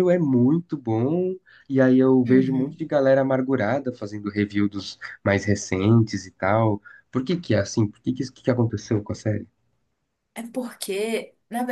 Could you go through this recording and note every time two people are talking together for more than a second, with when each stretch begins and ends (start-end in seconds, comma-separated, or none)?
none